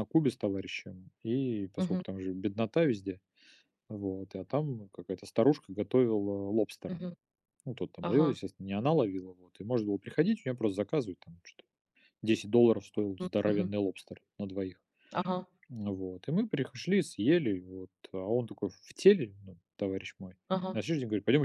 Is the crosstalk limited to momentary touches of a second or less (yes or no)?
yes